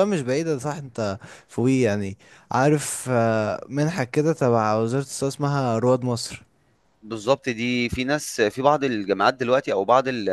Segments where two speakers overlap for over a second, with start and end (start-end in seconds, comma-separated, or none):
none